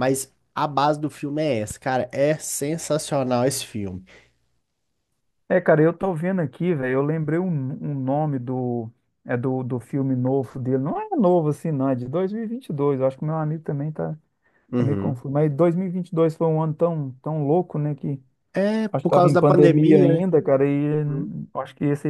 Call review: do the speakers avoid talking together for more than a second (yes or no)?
no